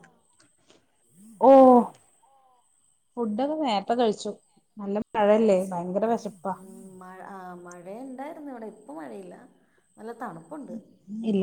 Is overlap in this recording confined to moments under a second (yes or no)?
yes